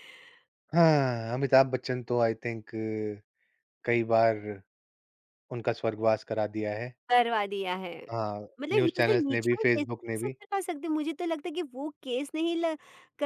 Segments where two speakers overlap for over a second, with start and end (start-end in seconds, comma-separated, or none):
8.6-10.3